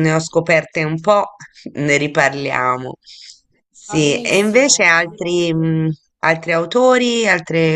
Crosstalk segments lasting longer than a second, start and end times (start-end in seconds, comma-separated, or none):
3.9-5.7